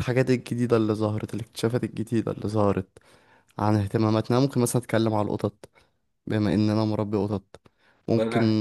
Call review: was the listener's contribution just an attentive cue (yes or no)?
yes